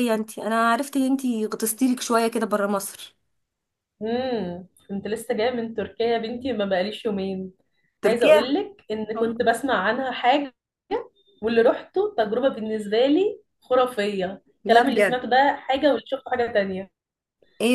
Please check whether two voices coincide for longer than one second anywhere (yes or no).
no